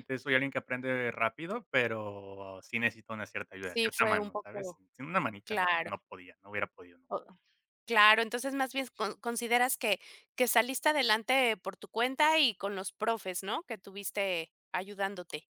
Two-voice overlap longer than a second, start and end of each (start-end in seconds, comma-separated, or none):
3.6-4.8